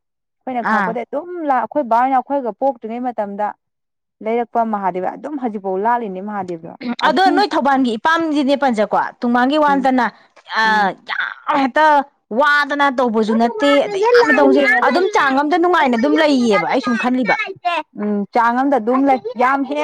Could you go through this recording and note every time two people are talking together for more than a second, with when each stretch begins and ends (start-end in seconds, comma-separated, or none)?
15.8-17.3